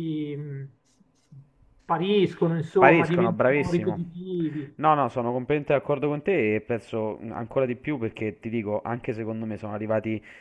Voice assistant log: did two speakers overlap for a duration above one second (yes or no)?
yes